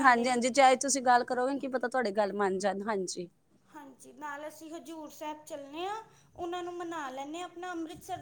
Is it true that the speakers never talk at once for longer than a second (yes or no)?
yes